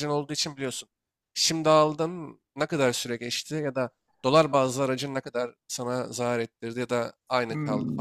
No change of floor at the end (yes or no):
no